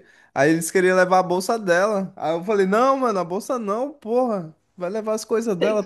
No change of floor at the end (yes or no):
yes